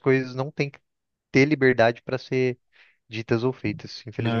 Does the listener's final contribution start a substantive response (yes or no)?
yes